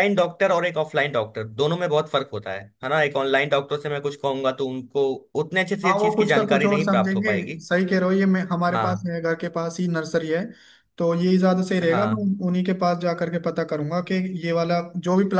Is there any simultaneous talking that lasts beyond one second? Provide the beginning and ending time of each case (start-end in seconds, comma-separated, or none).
5.8-7.6